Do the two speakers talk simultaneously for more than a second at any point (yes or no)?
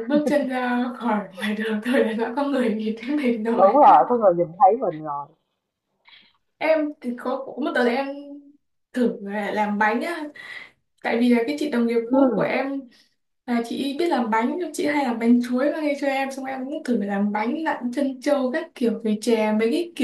no